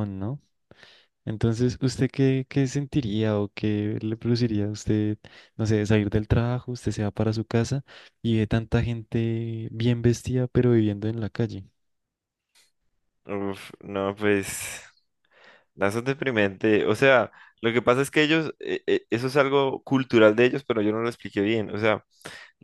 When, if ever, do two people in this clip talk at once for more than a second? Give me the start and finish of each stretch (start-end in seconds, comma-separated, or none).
none